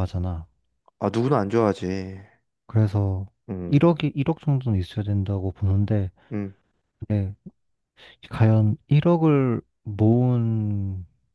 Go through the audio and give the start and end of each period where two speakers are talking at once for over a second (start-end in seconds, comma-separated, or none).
none